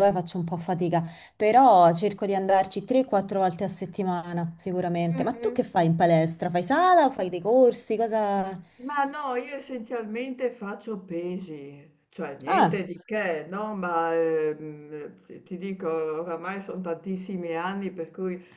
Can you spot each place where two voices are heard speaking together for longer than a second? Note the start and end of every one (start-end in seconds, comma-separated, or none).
none